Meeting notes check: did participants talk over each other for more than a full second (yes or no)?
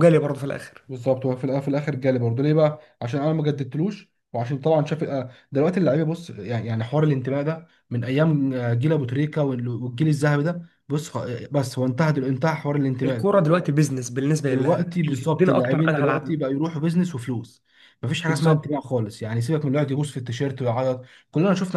yes